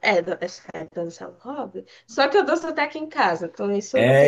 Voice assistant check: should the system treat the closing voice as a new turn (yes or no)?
yes